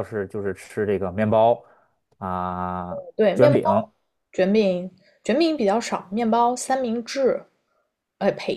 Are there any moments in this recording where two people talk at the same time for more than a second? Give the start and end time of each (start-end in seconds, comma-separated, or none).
none